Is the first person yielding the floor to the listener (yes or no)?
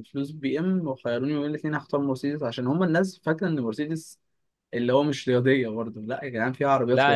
yes